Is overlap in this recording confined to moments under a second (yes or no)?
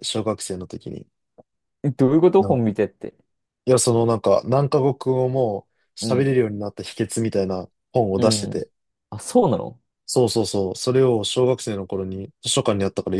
yes